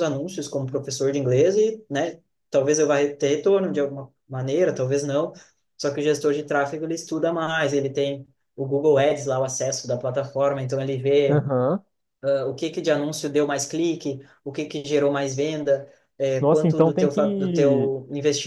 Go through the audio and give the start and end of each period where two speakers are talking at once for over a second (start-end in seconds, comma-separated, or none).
16.4-17.9